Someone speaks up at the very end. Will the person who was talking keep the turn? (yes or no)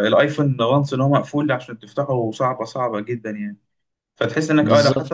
yes